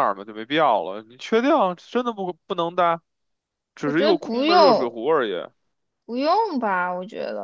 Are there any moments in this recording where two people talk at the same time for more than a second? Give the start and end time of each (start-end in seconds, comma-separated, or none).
3.8-5.0